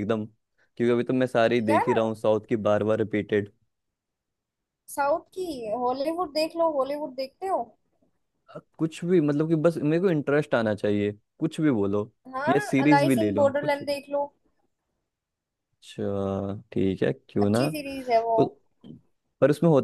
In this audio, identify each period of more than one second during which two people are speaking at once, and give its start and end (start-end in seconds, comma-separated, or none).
12.5-14.0